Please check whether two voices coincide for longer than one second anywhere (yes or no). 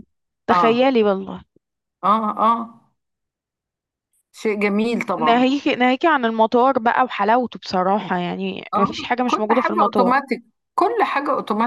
yes